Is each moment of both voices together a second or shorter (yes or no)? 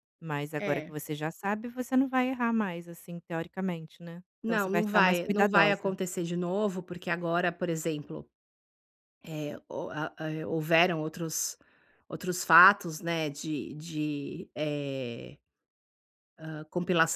no